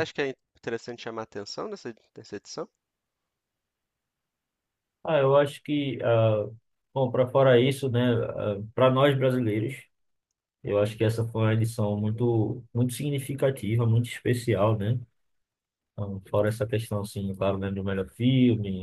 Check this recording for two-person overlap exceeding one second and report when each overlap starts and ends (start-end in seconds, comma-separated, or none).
none